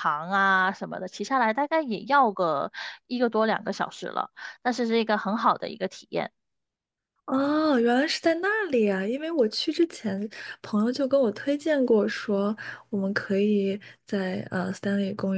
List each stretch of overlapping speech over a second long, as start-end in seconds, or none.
none